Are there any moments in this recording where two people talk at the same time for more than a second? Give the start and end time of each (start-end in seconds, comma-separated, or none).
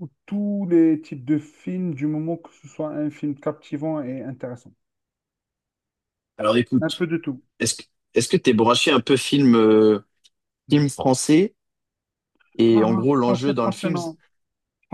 12.7-14.1